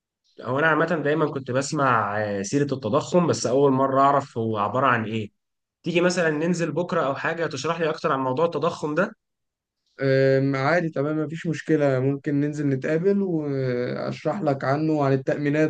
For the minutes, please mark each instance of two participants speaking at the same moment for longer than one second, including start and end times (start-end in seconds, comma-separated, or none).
none